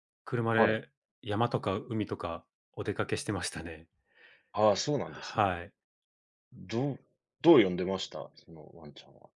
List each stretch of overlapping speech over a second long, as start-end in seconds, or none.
none